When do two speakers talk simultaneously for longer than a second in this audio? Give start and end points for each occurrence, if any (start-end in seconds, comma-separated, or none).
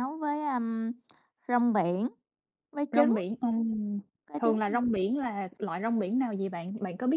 none